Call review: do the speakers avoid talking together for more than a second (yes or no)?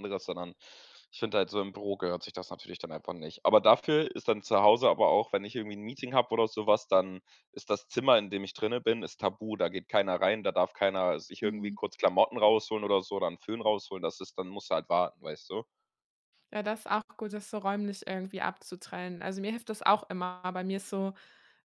yes